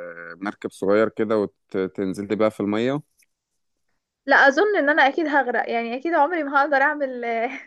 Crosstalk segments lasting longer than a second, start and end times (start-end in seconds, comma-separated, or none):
none